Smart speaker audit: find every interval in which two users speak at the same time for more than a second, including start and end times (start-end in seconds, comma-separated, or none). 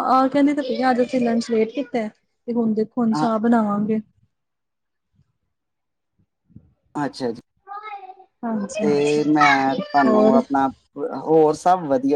none